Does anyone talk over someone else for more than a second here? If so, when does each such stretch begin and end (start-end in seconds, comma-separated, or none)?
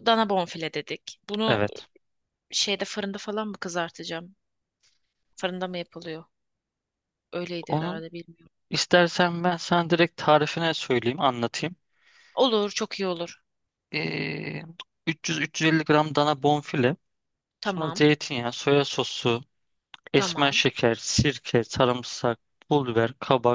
none